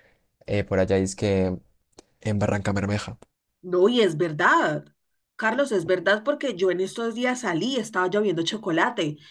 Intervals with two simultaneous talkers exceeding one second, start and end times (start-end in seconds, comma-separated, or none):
none